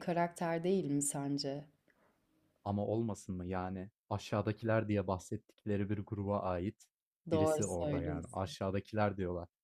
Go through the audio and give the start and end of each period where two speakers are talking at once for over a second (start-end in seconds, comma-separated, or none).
7.3-8.5